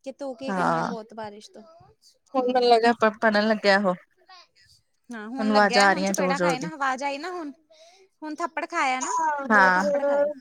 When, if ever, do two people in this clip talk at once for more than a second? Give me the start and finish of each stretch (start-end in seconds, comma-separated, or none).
5.2-6.7